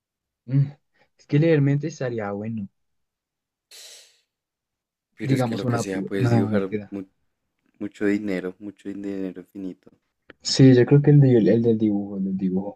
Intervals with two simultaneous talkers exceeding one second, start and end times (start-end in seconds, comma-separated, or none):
5.2-6.9